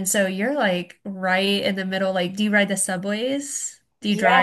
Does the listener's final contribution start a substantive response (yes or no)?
yes